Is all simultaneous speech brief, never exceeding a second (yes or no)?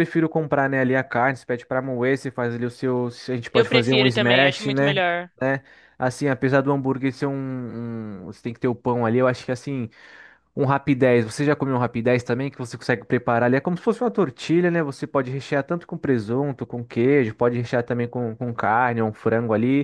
no